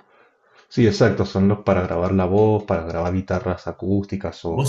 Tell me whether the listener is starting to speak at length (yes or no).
yes